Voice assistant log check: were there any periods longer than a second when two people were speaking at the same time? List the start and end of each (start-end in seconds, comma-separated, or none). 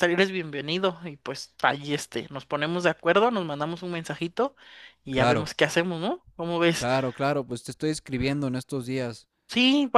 none